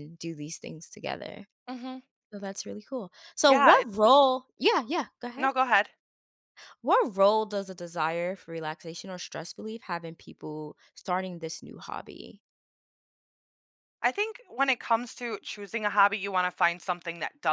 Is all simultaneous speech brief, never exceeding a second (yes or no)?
yes